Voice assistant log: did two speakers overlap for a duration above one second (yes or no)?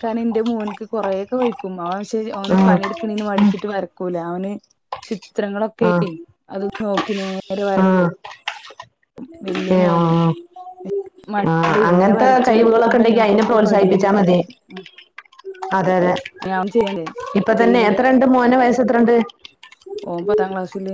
yes